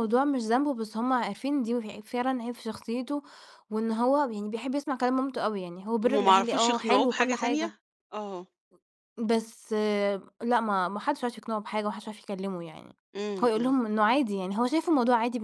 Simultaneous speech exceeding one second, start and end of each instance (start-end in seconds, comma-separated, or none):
6.0-7.7